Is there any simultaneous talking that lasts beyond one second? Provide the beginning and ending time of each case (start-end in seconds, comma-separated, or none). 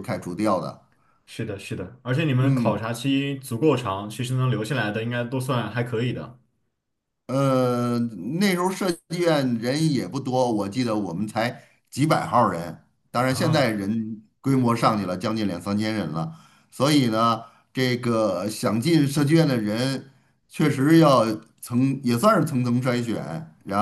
none